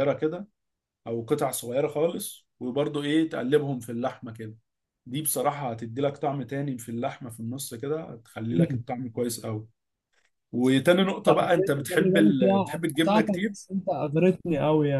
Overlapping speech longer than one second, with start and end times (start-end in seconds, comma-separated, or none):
11.3-13.6